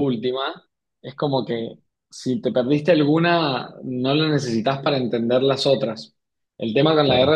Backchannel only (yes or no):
yes